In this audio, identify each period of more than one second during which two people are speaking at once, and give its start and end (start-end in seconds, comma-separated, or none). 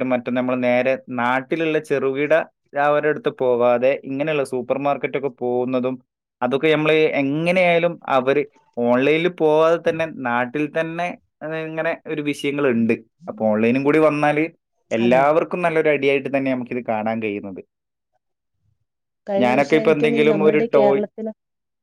19.4-21.0